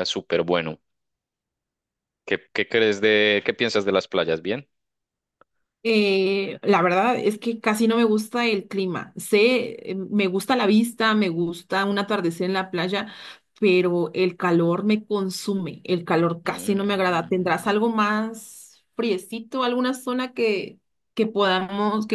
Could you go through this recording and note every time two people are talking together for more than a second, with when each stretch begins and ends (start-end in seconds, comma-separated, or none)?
16.4-17.7